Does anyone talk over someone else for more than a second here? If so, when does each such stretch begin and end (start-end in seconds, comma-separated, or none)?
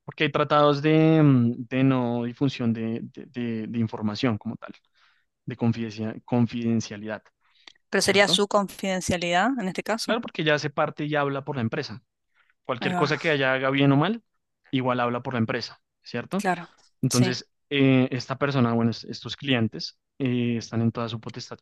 none